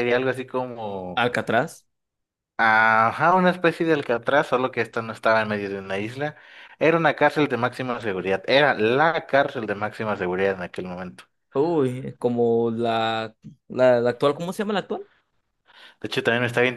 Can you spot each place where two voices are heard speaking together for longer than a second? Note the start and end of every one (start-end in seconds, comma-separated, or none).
none